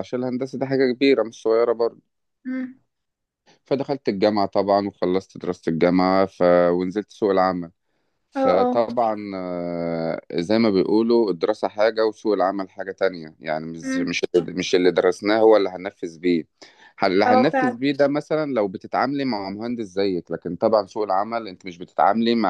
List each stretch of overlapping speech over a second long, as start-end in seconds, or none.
none